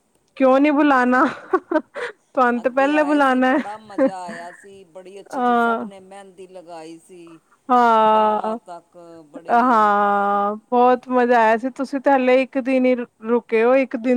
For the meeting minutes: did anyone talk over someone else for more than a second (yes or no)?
no